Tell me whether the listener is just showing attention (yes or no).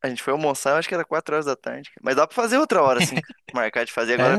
no